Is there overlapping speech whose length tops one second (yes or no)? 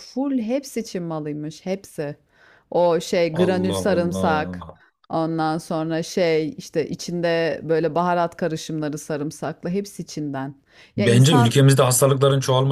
yes